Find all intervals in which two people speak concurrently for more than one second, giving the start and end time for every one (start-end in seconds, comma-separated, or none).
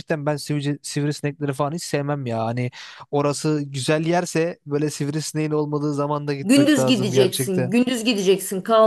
6.4-7.7